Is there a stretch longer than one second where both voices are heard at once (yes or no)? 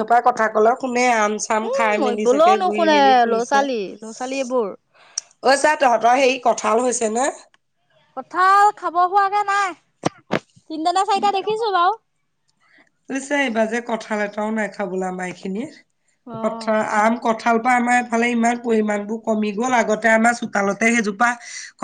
yes